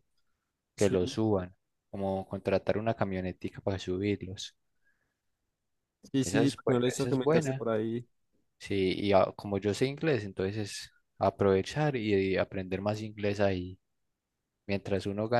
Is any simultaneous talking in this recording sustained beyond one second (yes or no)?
yes